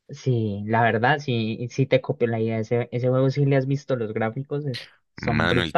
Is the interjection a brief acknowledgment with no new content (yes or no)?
no